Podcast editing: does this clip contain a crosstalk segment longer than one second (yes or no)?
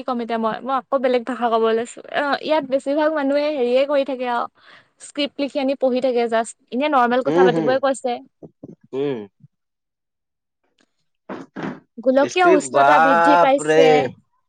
yes